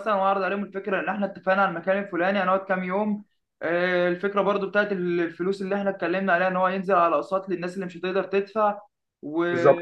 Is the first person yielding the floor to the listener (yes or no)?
no